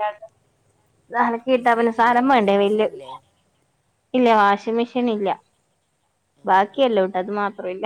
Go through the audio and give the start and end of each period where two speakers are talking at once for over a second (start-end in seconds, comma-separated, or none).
1.6-2.9